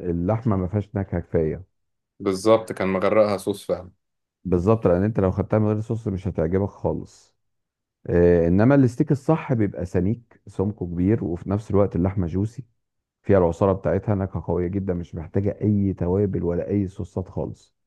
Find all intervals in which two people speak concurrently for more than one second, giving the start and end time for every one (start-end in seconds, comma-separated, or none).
none